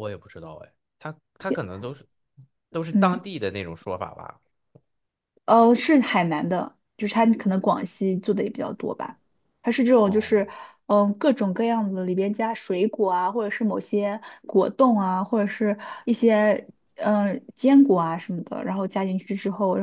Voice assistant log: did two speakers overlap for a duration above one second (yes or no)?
no